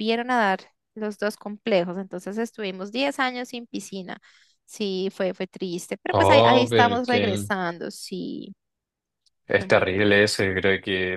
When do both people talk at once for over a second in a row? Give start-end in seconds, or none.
6.1-7.5